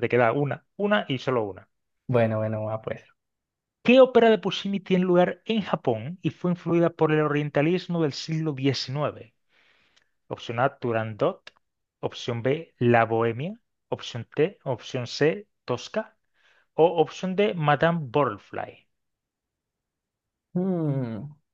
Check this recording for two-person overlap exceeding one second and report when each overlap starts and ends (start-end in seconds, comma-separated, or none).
none